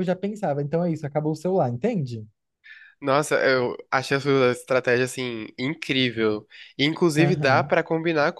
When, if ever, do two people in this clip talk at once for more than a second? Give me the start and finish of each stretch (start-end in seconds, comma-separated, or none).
none